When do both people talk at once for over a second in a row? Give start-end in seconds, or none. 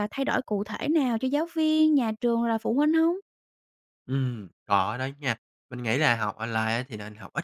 none